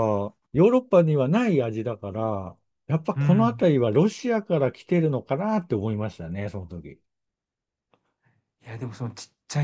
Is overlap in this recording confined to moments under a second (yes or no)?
yes